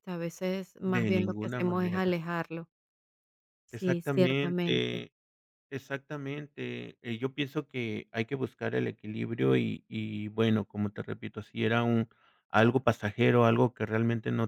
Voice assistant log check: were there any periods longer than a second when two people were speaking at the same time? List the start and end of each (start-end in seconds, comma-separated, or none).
0.8-2.2, 3.7-5.0